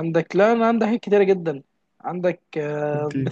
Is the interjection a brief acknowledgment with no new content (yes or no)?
yes